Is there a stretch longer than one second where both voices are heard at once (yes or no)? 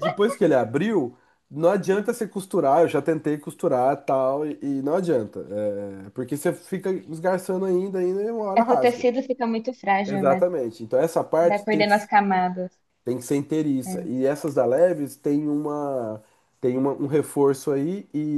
no